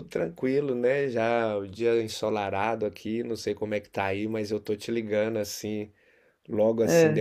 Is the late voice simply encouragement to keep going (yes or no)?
yes